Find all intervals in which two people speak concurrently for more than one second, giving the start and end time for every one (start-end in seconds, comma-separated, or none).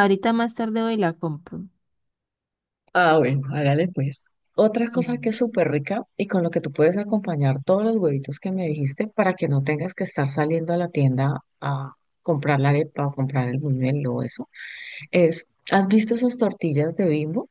none